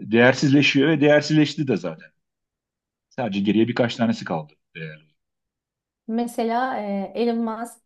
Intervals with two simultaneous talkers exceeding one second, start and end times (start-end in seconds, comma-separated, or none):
none